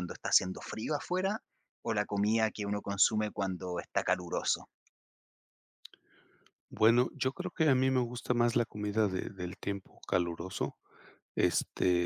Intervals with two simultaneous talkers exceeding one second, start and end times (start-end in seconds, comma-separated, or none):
none